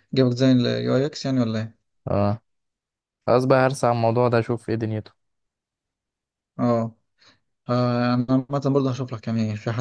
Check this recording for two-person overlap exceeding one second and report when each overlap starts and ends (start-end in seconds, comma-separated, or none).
none